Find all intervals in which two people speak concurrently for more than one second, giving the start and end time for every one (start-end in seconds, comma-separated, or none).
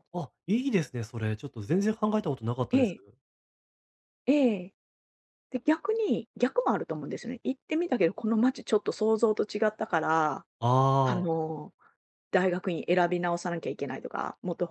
none